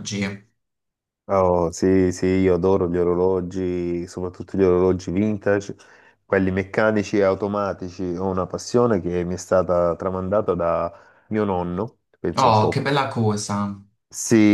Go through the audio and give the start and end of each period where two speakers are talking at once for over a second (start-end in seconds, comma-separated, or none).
none